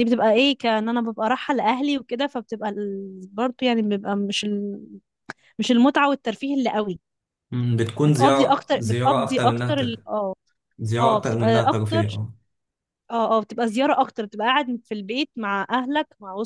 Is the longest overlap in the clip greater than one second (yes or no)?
yes